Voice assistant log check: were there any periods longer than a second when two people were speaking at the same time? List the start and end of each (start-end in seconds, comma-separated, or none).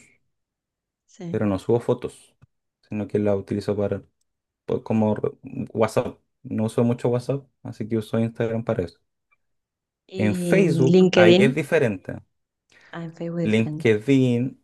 10.2-11.5